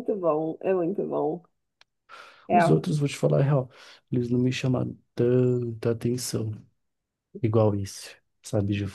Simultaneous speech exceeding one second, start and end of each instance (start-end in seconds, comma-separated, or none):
none